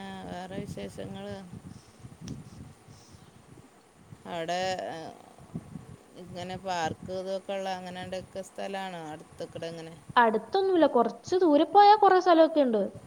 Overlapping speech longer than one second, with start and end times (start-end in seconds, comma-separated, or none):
none